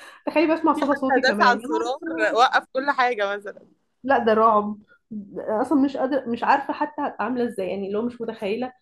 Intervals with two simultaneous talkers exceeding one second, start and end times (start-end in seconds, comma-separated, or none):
0.7-2.4